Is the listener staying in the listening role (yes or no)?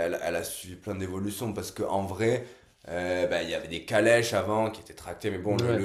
yes